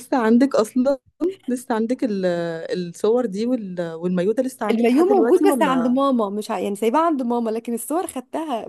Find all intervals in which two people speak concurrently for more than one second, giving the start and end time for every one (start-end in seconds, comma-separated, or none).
4.7-6.0